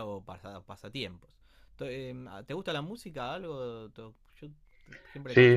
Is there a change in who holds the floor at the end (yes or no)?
yes